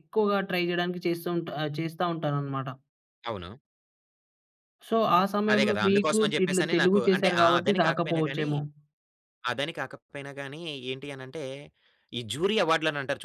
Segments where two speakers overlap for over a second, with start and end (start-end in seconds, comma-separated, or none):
5.5-8.5